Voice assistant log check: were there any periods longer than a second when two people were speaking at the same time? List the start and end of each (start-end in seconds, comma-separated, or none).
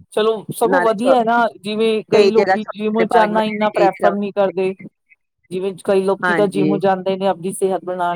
2.4-4.5